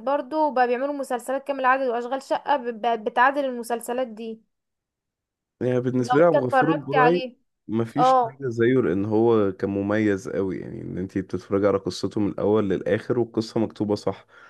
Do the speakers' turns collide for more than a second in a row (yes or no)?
yes